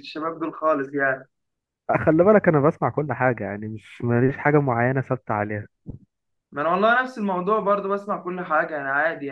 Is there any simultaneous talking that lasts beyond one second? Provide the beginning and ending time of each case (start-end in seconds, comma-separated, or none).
none